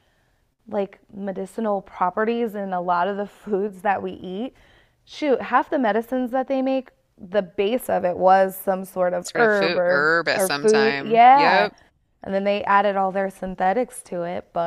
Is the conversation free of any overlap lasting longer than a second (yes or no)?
no